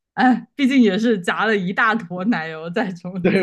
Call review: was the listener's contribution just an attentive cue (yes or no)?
no